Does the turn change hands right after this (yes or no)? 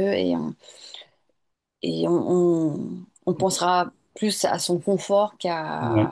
no